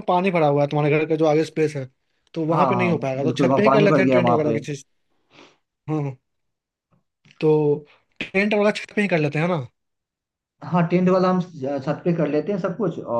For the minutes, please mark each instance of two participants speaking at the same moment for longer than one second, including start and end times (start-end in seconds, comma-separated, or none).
2.5-4.6